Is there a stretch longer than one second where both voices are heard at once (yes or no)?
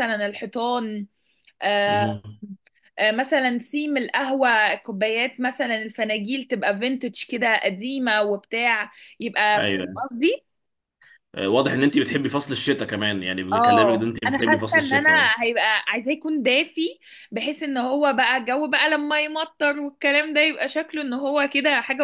yes